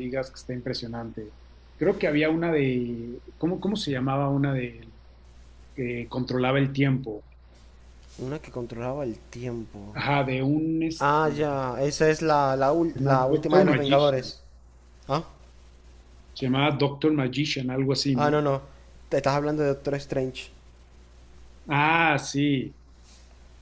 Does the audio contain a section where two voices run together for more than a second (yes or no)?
yes